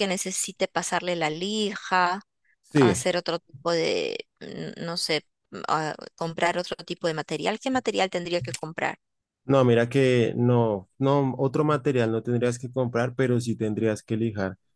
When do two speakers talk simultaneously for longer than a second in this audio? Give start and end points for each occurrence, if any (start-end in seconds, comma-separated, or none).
none